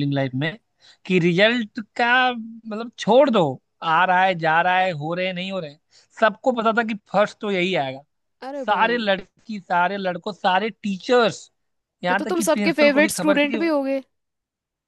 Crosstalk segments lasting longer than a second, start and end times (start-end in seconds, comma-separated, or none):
12.1-13.6